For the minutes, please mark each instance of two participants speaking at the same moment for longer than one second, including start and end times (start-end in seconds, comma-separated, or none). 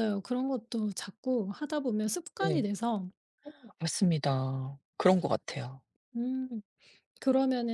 none